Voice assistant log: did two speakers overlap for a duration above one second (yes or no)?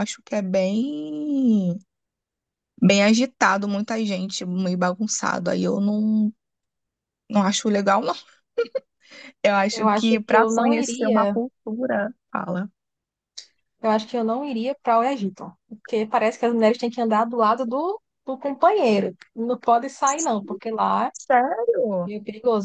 yes